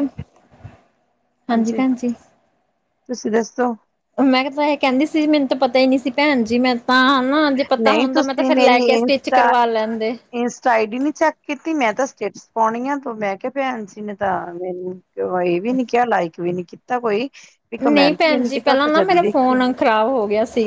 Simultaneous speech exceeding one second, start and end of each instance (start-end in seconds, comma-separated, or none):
17.8-19.6